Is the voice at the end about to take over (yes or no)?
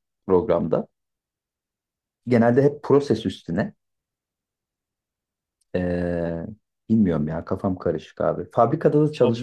yes